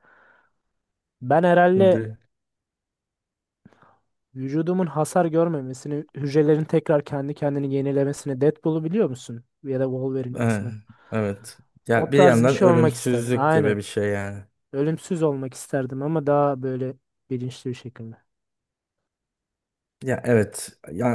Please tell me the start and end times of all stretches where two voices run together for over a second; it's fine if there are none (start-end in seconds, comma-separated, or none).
11.9-13.8